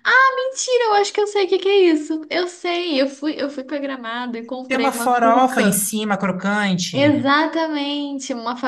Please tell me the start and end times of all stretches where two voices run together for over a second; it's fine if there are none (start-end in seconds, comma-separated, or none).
4.7-5.9